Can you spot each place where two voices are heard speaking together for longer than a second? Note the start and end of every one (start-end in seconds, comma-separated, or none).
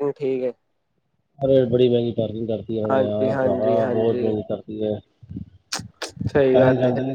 2.9-4.3